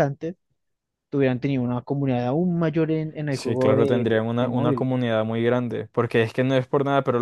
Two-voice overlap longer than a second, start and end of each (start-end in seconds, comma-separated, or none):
3.3-4.9